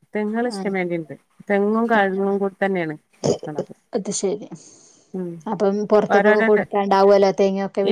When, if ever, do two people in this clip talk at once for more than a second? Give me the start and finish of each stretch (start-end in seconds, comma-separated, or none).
none